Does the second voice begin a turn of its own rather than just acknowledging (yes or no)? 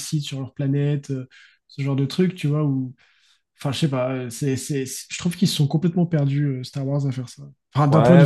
yes